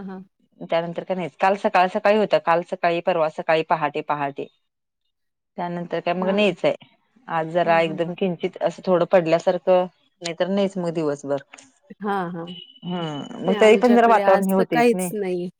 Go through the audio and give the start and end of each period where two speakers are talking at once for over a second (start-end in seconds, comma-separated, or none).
13.5-14.8